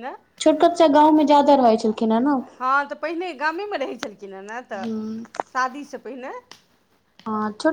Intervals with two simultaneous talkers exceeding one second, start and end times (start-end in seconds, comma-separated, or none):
none